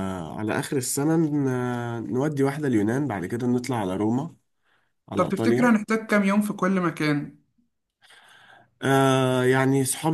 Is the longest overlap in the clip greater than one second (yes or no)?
no